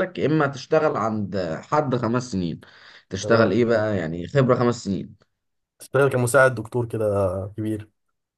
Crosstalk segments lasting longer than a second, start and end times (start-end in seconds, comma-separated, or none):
none